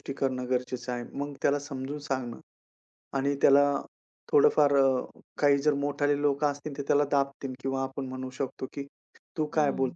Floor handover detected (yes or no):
no